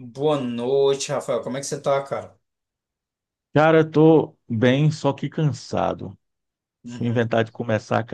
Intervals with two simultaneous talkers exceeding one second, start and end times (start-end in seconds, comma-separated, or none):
none